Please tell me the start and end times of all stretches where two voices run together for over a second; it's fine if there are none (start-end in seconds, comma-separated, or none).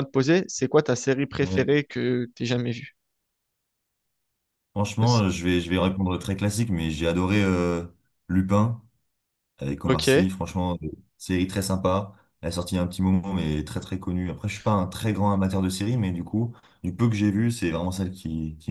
none